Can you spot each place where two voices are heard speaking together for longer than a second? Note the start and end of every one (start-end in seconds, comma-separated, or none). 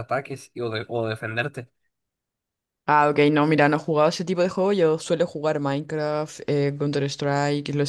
none